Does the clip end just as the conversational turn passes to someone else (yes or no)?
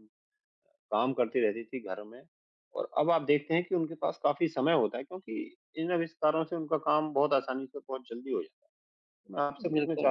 no